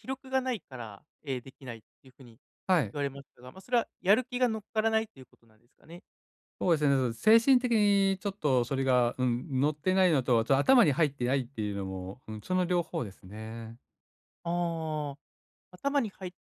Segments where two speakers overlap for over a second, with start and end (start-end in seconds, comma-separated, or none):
none